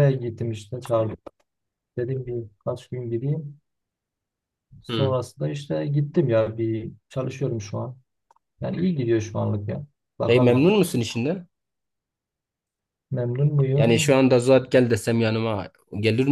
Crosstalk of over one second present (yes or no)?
no